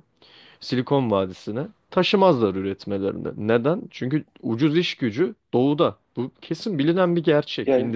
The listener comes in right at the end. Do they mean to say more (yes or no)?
yes